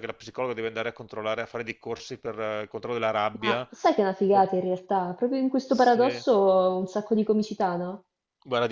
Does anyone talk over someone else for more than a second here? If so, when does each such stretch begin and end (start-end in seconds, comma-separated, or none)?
none